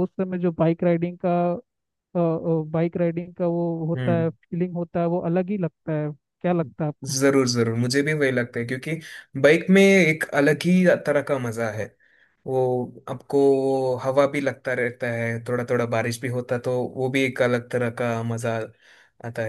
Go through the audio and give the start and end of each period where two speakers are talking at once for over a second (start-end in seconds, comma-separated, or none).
none